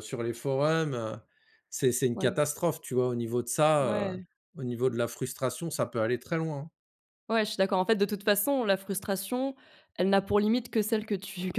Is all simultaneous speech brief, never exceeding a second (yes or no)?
yes